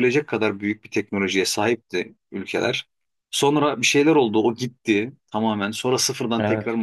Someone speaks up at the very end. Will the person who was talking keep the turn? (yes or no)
yes